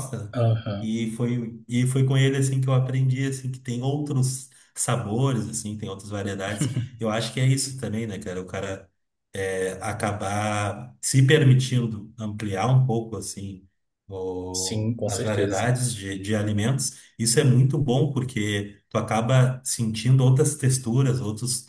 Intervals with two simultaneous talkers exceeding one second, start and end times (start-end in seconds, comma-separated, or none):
14.5-15.7